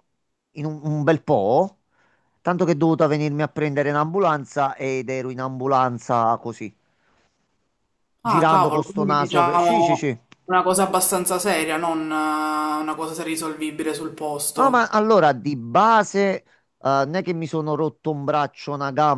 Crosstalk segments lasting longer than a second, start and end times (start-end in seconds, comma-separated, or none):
8.2-10.2